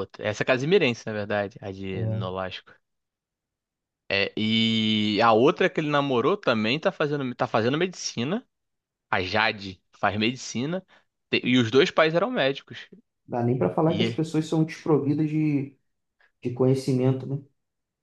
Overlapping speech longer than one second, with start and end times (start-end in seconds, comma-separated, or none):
none